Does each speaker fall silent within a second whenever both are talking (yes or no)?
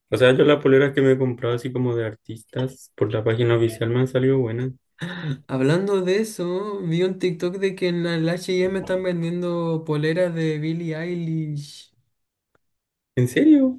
yes